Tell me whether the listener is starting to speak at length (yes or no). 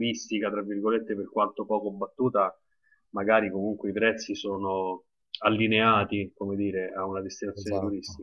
no